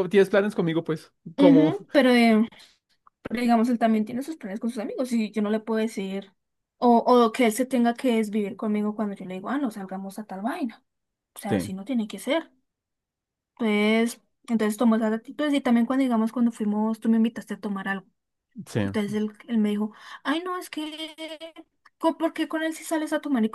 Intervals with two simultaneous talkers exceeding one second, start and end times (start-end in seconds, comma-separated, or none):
none